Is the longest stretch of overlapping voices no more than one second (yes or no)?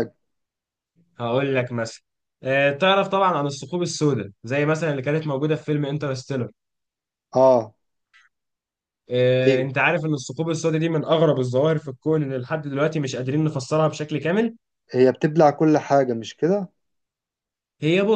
yes